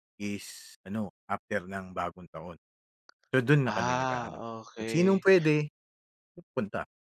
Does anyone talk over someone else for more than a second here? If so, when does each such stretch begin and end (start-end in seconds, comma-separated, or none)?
3.6-5.2